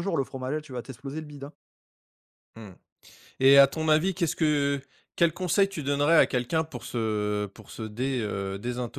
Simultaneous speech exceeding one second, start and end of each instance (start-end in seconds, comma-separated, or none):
none